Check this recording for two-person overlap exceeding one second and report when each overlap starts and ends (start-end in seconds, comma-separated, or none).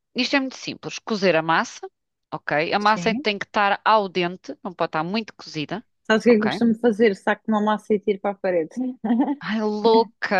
none